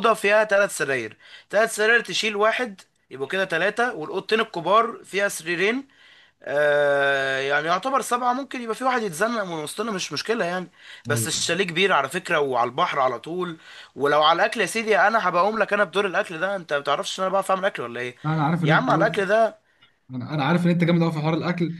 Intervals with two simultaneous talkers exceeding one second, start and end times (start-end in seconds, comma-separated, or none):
none